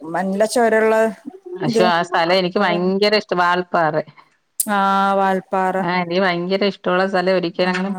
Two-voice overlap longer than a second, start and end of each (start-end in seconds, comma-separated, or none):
none